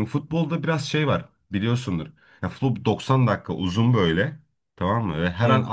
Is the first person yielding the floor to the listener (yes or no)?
no